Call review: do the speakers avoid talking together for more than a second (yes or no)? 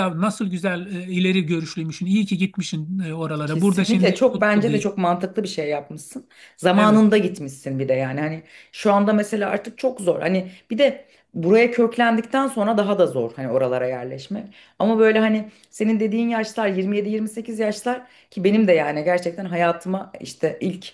no